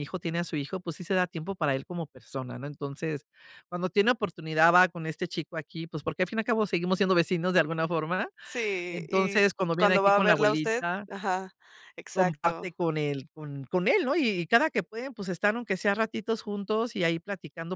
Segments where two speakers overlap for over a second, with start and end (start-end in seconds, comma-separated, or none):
8.9-11.1